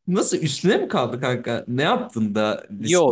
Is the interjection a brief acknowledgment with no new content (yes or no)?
no